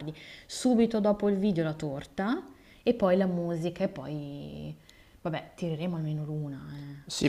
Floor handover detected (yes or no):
yes